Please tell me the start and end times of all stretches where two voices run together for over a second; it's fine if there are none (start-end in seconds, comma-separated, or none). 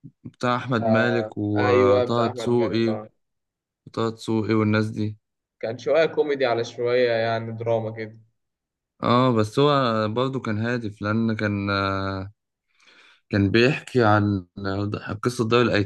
0.8-3.0